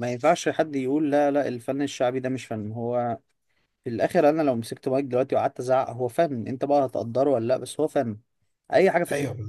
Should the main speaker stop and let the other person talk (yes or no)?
no